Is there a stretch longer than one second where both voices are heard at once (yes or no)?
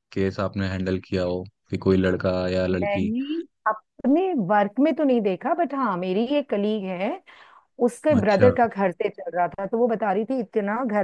no